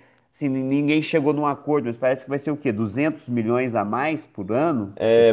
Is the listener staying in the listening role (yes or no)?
no